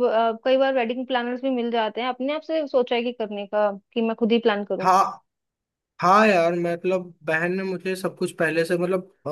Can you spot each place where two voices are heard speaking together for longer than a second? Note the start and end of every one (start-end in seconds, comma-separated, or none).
none